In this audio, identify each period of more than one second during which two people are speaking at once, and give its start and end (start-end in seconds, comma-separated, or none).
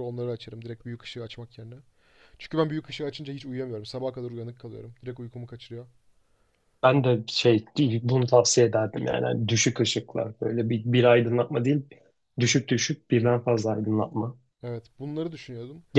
none